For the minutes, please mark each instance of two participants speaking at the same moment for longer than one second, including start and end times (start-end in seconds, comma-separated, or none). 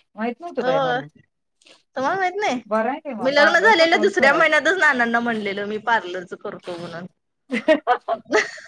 3.2-4.6